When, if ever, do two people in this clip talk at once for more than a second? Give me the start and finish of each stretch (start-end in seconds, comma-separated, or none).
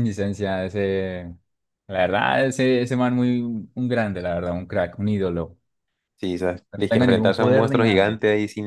6.7-8.2